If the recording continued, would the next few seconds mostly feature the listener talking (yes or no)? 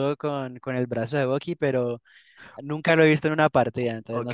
yes